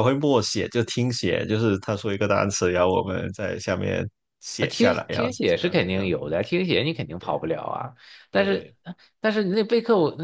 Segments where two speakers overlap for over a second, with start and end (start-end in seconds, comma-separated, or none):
4.6-6.1